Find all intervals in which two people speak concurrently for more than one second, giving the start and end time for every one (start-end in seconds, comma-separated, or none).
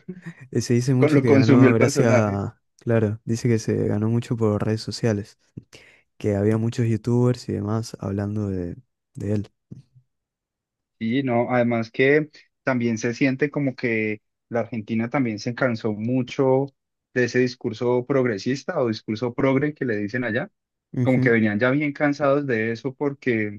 1.0-2.4